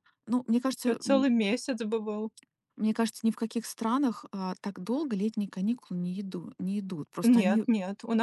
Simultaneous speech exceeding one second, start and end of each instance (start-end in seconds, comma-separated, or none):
none